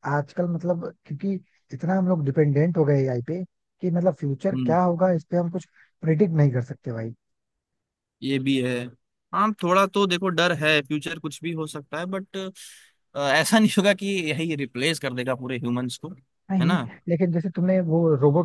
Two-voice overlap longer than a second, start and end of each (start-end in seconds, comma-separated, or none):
none